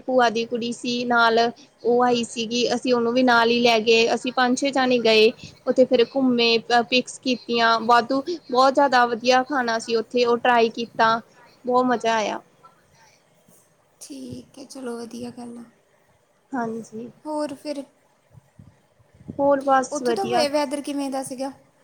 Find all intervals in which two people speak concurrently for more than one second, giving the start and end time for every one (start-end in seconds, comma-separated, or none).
none